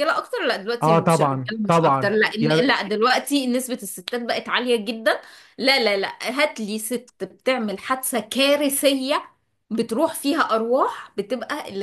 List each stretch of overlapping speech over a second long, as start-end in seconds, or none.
0.8-2.8